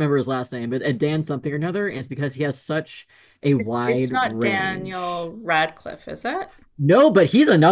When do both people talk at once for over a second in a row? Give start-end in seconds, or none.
3.6-5.3